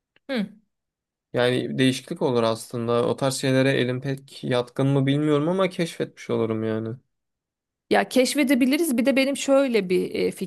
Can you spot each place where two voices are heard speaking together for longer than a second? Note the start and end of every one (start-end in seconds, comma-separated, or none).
none